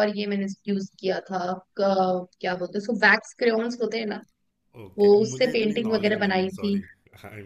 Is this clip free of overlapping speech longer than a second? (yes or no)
no